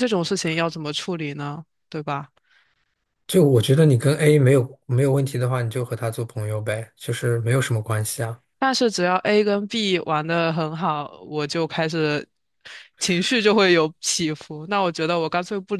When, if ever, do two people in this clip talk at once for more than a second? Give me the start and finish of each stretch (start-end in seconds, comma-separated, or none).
none